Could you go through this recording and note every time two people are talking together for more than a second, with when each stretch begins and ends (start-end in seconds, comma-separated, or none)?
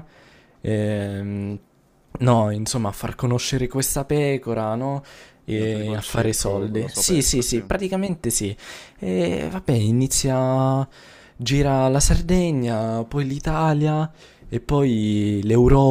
5.4-7.6